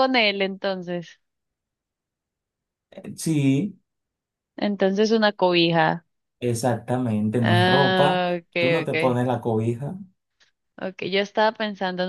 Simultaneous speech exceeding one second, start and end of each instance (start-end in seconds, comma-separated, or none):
7.4-9.2